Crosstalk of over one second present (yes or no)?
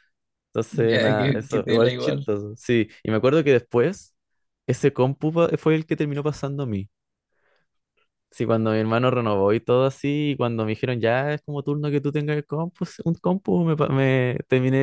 yes